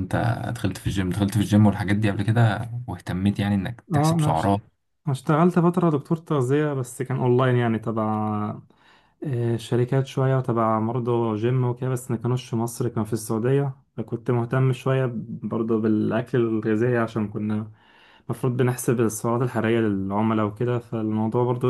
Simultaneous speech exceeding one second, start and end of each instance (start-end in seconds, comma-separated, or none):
none